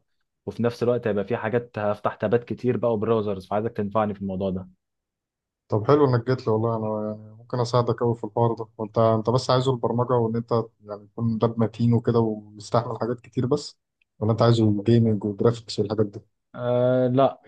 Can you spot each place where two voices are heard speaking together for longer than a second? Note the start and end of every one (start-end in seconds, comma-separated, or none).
none